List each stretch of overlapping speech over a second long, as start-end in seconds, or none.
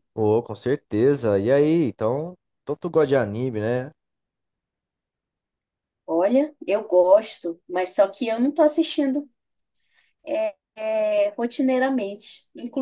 none